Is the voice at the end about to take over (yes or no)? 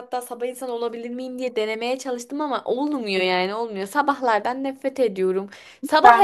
no